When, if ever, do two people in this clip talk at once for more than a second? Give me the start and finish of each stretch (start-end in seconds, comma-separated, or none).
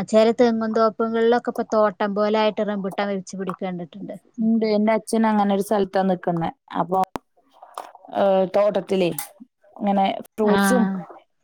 none